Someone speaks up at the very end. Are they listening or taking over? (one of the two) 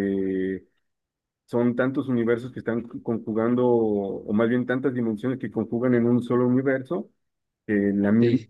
listening